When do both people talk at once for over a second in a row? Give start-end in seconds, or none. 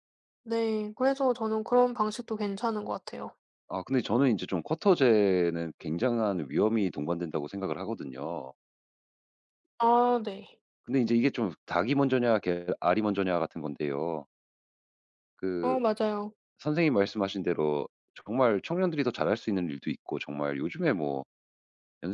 none